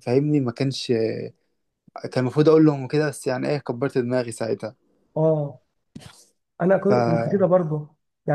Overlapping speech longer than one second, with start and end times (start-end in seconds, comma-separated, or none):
none